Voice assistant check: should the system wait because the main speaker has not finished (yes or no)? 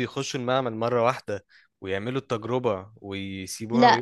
no